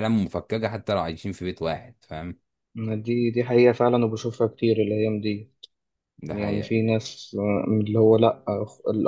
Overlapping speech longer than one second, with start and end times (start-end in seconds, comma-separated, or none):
none